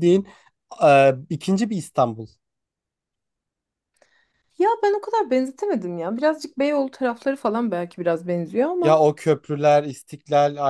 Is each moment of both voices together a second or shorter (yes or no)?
yes